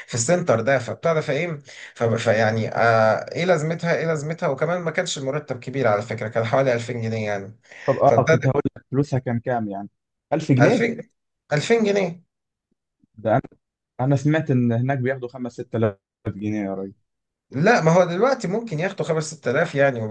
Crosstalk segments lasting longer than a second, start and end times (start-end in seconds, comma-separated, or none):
none